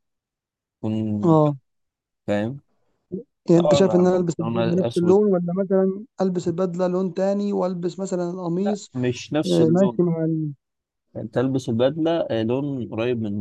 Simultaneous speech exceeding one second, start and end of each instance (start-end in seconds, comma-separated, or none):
3.5-5.2